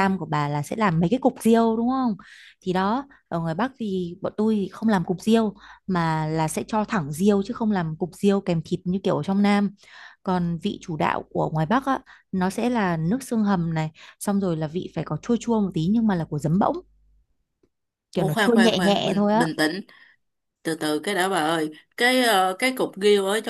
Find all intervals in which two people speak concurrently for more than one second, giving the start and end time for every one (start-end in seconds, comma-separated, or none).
18.1-19.5